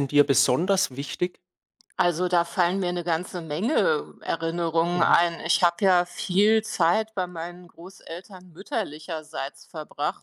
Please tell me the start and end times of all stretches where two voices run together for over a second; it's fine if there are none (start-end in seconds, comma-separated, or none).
none